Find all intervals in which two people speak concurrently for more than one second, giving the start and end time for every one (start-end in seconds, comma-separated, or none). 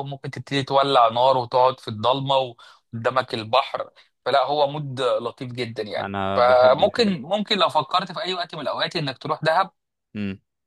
6.0-7.2